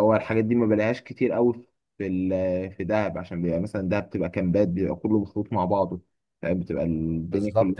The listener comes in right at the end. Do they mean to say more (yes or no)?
yes